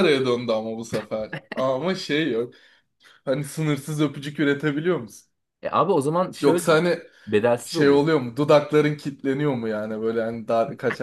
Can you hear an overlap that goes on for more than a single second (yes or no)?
no